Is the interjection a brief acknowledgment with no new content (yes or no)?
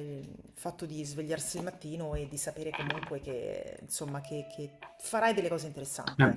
no